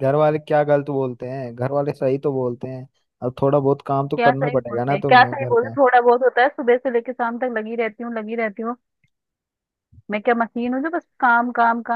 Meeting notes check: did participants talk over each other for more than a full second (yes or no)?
yes